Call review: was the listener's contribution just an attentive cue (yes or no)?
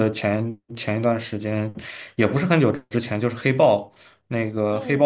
yes